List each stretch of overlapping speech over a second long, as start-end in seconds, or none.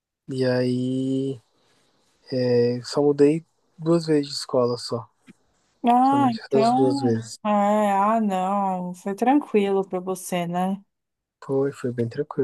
6.0-7.4